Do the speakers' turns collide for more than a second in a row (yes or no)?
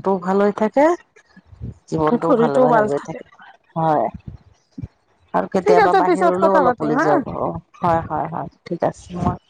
yes